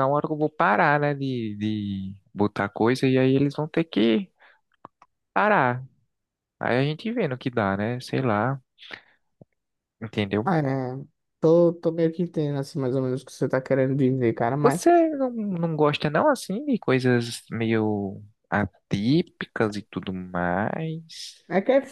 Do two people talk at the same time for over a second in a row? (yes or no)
no